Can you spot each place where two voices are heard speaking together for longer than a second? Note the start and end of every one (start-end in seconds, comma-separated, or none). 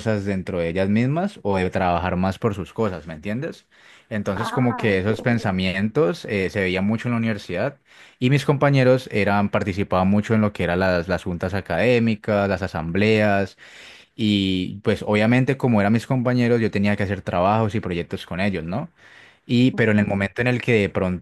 4.3-5.5